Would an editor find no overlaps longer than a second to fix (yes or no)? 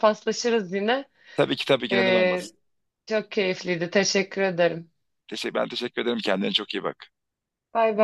yes